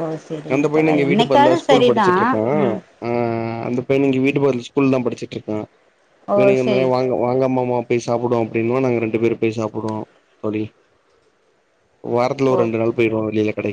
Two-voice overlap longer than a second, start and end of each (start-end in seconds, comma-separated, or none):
0.6-2.1